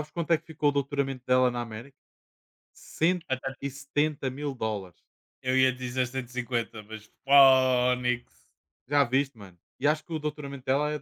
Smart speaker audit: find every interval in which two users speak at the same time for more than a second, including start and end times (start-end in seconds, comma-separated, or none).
none